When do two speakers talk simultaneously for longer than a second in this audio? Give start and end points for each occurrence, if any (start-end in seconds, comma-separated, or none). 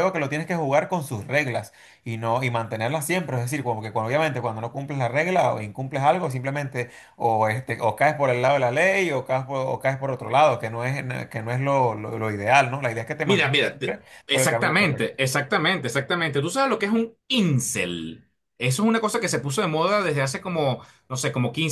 13.2-15.2